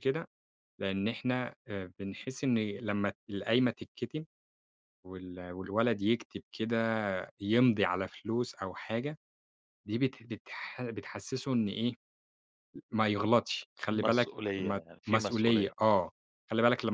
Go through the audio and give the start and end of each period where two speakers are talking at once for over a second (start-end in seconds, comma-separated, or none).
13.9-15.7